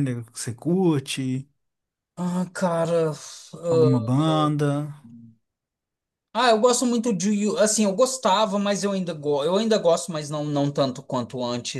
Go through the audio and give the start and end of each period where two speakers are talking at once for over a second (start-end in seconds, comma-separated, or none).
none